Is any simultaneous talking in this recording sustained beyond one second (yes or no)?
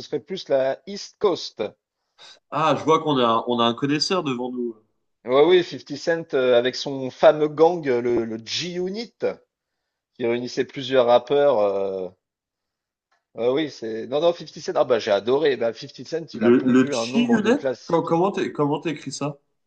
yes